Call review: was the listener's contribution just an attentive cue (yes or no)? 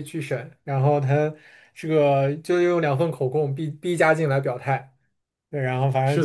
yes